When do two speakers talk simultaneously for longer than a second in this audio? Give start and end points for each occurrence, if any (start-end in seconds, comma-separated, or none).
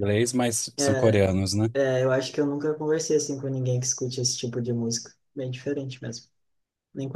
none